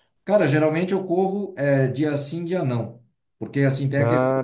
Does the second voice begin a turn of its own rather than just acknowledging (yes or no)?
no